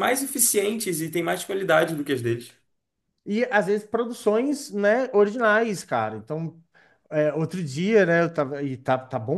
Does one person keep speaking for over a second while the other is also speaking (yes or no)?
no